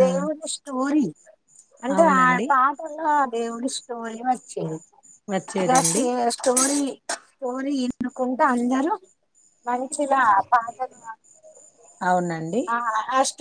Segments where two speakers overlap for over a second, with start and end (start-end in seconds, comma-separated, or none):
none